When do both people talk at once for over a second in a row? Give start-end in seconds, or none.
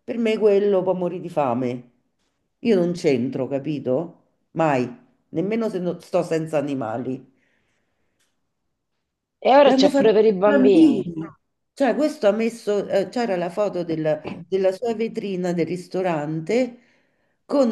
9.6-11.1